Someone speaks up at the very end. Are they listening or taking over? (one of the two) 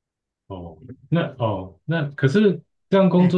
listening